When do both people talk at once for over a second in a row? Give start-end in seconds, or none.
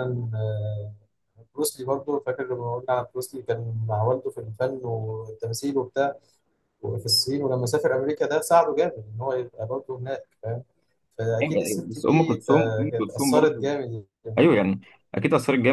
11.4-13.7